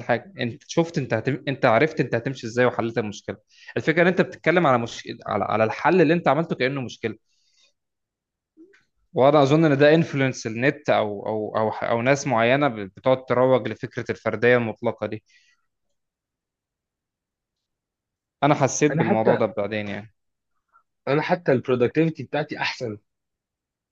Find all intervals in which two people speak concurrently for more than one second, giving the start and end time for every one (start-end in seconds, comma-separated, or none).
none